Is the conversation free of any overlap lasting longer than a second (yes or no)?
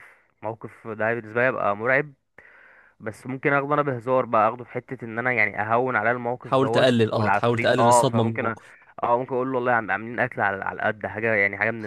no